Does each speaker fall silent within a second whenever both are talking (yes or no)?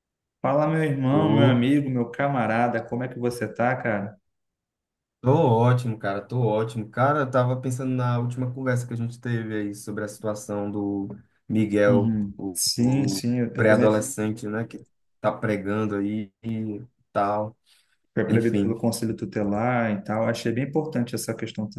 no